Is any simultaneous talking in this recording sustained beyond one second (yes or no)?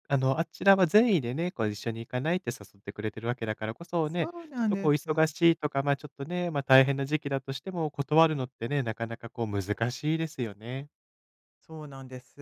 yes